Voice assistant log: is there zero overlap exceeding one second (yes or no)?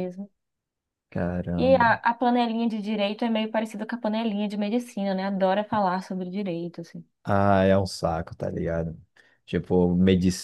yes